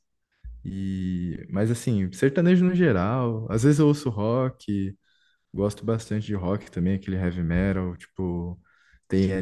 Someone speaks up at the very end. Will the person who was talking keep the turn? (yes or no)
yes